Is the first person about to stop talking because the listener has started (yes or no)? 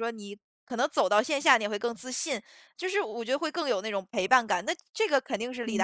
yes